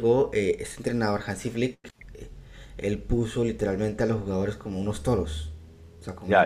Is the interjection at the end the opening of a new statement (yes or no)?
yes